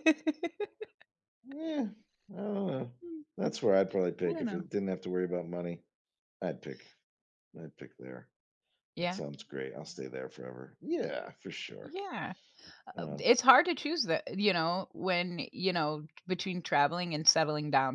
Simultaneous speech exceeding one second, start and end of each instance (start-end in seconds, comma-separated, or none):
none